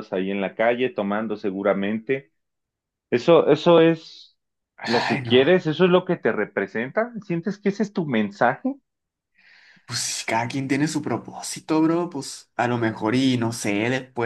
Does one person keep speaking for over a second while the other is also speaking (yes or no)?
no